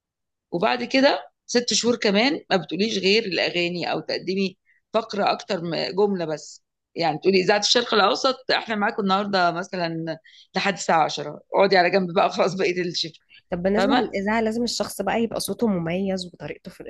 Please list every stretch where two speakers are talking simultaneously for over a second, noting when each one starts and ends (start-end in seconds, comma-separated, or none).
none